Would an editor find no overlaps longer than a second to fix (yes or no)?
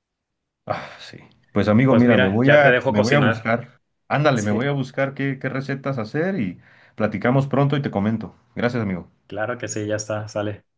no